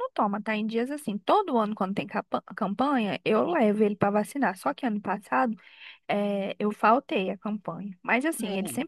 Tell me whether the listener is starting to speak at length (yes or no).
no